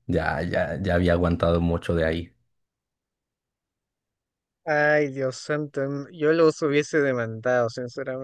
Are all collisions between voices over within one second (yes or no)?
yes